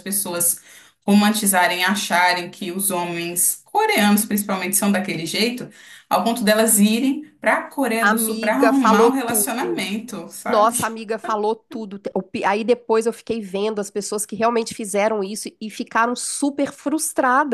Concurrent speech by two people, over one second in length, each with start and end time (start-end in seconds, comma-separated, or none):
8.0-9.8